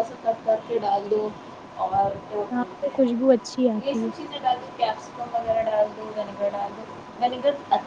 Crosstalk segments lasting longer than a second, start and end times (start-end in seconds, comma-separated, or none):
2.5-4.1